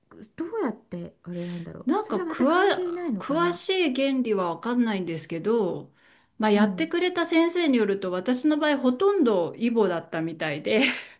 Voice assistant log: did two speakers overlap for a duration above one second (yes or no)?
no